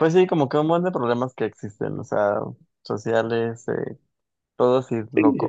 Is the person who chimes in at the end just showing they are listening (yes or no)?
no